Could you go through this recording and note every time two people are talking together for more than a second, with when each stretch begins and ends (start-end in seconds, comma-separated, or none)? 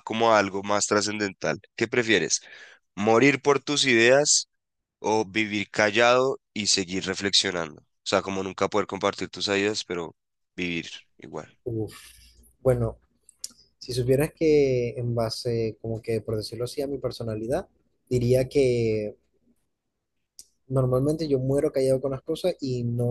none